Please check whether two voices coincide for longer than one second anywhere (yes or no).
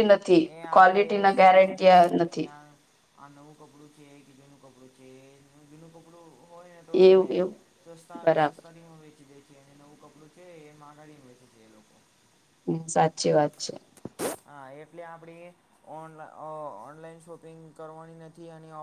yes